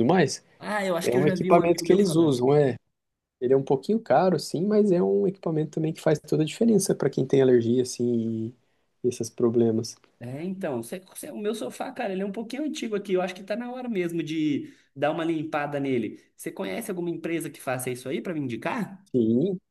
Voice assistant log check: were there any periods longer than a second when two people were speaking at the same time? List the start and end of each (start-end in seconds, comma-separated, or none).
1.0-2.4